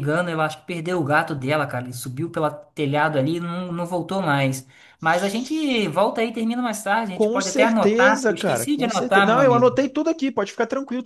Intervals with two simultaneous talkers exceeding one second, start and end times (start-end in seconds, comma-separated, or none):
7.2-9.7